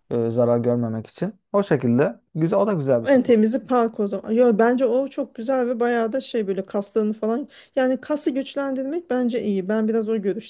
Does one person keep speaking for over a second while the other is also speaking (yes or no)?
no